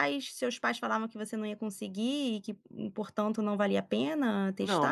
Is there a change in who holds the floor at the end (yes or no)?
yes